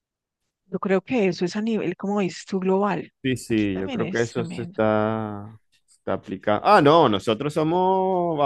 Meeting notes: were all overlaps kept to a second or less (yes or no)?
no